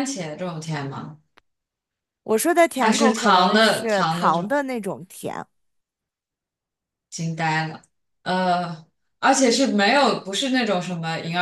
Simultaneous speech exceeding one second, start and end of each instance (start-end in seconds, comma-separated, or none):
2.8-4.5